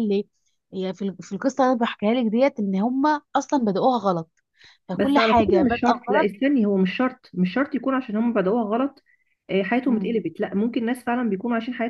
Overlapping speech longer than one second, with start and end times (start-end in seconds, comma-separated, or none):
4.9-6.3